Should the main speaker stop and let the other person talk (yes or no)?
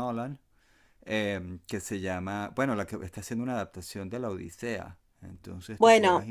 yes